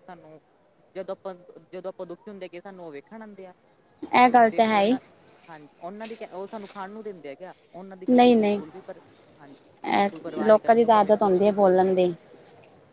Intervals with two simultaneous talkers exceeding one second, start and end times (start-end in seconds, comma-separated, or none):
10.0-12.0